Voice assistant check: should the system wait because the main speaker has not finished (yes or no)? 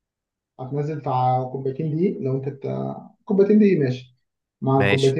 no